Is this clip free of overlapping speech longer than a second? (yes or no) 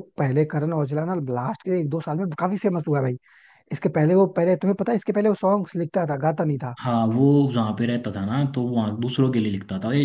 yes